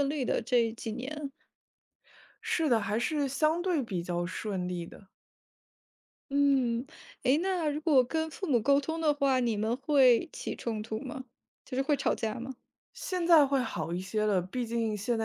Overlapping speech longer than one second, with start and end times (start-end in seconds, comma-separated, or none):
none